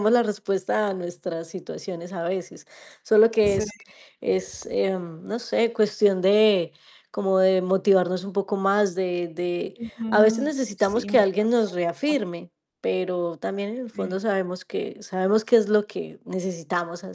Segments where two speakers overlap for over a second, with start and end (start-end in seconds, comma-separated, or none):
9.8-12.4